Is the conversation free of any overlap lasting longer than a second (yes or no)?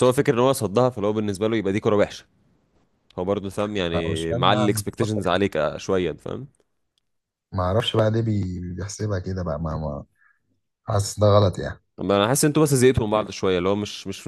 no